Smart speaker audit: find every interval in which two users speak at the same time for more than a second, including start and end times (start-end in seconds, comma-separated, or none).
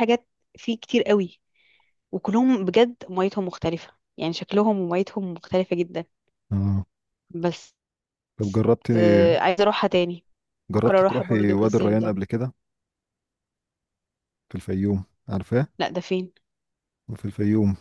10.7-12.1